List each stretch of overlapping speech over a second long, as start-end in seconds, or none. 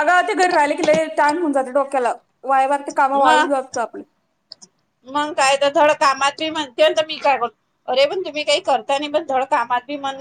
none